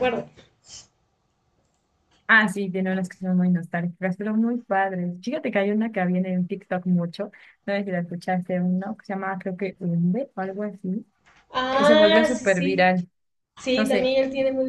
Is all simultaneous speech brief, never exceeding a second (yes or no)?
no